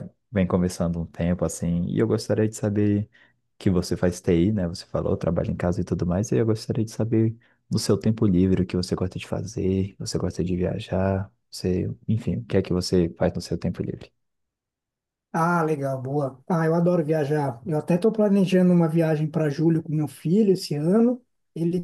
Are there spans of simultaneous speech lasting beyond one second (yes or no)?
no